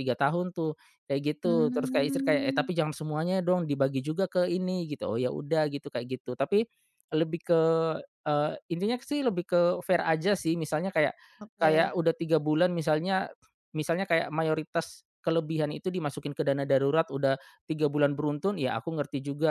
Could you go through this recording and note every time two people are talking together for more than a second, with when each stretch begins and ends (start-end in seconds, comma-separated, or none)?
1.4-2.7